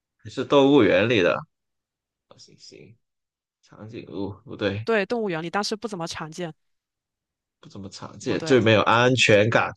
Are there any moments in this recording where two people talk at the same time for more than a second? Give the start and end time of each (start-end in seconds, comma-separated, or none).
none